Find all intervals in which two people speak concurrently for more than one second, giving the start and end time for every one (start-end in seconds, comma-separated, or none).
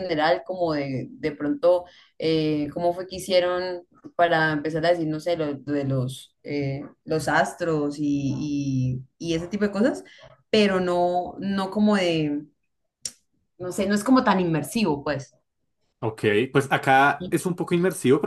none